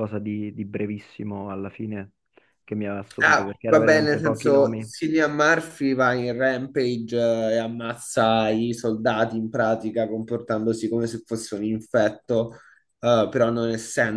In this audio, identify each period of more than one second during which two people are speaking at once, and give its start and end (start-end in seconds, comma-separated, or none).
3.2-4.9